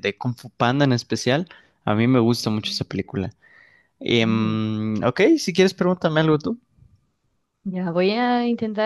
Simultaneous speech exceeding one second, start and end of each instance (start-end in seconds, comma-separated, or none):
none